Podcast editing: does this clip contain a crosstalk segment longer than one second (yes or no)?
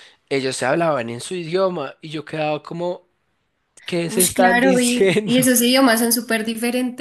yes